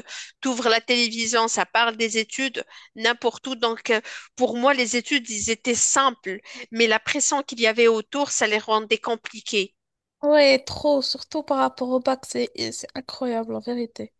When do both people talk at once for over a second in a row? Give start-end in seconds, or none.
none